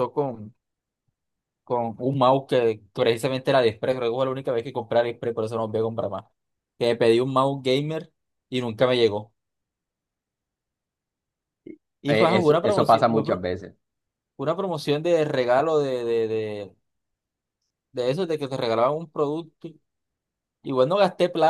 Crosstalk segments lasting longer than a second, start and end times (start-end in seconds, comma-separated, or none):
12.1-13.4